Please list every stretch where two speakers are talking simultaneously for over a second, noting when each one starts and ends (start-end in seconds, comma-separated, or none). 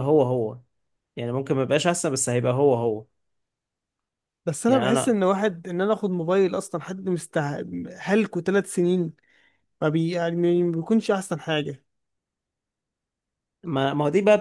none